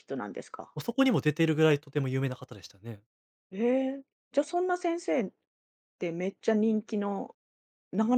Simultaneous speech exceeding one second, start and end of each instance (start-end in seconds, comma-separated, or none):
none